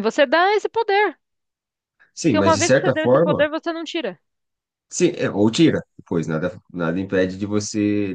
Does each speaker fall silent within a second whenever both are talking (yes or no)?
no